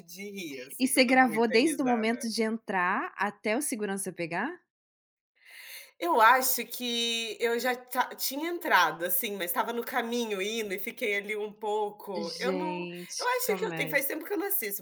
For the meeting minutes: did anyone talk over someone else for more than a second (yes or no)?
yes